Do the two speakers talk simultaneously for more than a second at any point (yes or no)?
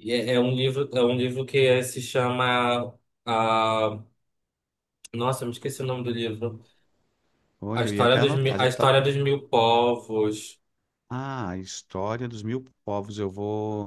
yes